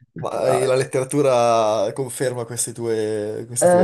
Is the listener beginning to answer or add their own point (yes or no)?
yes